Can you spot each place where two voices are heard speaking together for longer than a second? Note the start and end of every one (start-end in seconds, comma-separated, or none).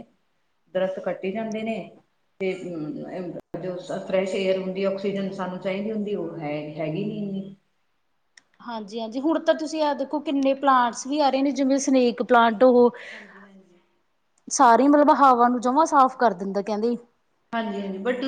none